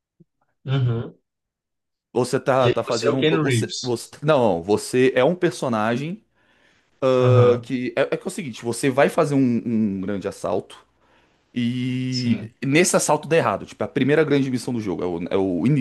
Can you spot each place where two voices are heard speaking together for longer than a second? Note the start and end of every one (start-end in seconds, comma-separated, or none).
2.6-3.9